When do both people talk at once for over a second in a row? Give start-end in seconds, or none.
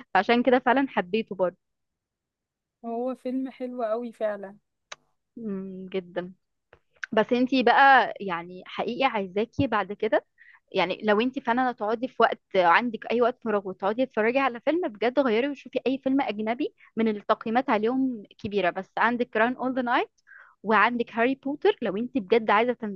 none